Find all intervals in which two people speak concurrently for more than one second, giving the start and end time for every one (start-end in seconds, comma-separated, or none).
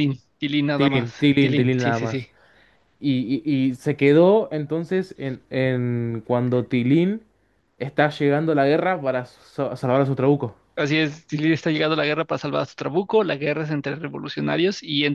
0.8-2.3